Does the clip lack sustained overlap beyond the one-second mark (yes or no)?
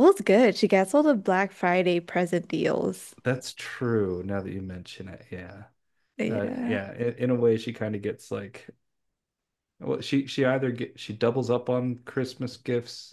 yes